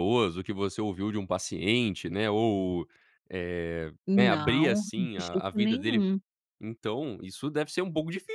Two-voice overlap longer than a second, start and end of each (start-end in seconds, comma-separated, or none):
4.1-6.0